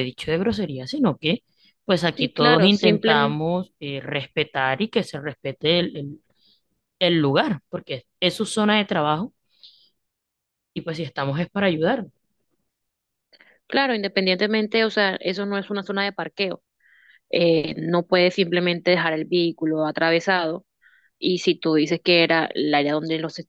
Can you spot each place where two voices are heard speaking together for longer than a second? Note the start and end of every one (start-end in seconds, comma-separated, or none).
2.2-3.4